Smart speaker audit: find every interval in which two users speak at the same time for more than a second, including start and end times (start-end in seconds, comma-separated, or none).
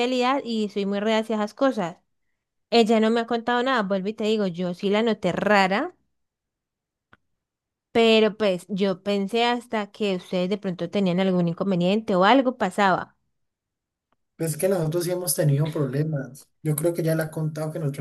none